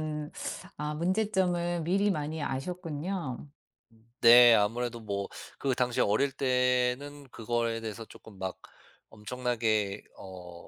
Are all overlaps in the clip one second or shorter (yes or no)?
yes